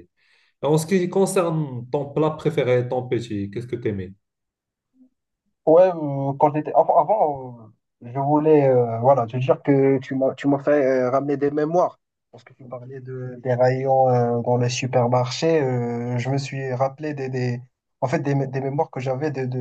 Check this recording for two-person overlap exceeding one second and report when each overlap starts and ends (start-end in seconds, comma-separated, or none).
none